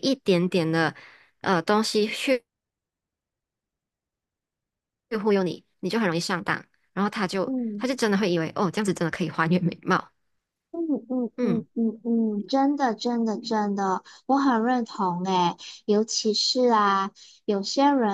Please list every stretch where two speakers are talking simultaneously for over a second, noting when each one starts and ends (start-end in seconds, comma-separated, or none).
none